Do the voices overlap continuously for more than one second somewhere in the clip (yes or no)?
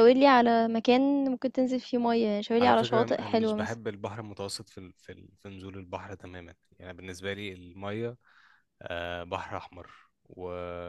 yes